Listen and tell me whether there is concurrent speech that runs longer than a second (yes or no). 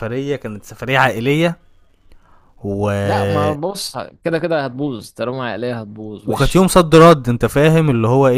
no